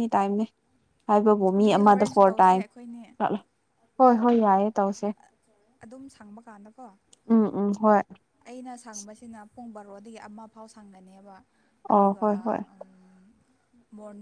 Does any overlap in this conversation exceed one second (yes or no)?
yes